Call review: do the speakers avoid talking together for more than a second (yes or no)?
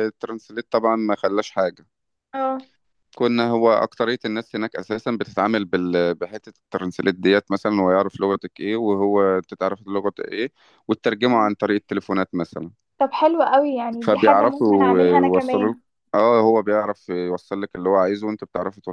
no